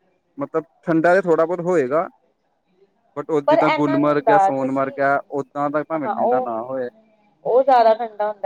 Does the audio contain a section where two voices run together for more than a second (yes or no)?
yes